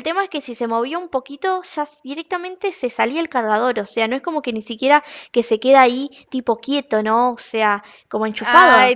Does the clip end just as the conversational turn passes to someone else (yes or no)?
yes